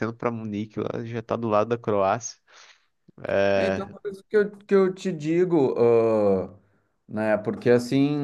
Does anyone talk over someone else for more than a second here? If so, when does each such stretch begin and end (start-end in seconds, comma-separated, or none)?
none